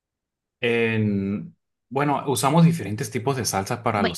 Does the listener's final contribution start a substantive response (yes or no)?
no